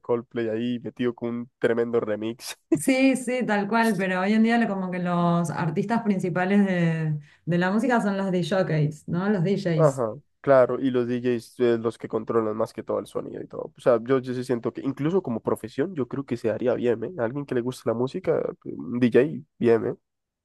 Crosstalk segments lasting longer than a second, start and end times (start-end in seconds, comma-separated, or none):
none